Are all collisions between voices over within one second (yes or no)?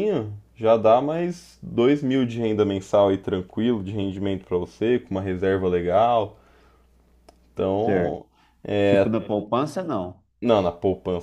yes